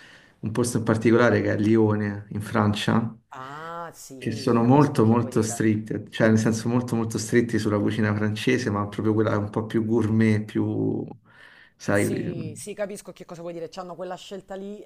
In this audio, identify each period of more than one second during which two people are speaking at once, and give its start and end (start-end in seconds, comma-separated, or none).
4.2-5.6